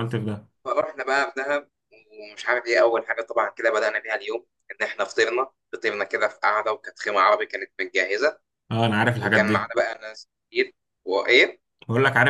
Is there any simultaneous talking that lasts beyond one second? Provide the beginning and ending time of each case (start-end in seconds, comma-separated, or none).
none